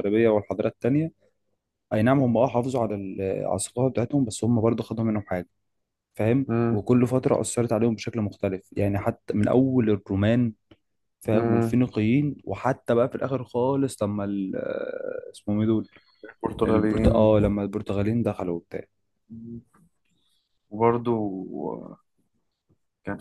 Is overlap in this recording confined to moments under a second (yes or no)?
yes